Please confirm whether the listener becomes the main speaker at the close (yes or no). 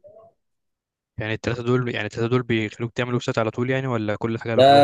yes